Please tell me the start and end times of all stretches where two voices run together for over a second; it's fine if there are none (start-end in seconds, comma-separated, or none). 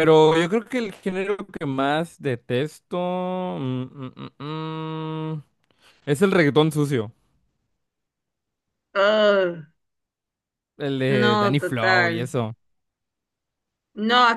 11.1-12.3